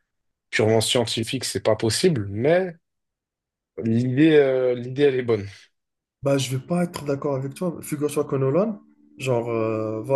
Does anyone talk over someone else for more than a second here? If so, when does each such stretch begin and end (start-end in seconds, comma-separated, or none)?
none